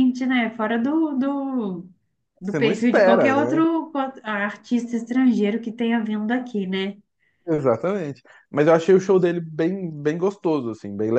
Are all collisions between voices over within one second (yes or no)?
no